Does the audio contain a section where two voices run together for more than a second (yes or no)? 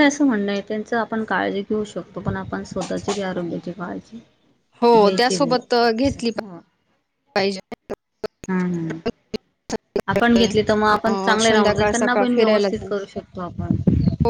yes